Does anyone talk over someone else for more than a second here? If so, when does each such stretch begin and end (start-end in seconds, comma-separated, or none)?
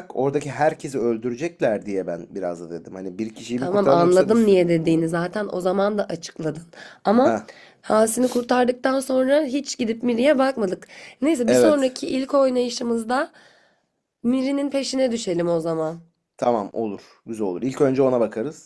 3.6-5.1